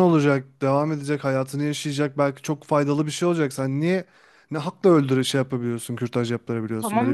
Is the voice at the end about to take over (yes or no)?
yes